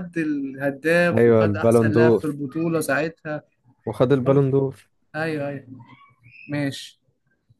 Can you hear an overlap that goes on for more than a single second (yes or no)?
yes